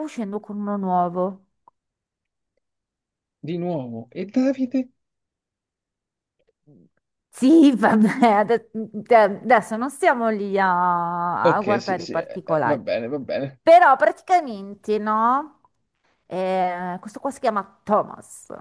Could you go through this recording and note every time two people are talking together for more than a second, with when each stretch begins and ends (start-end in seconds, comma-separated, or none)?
11.4-12.8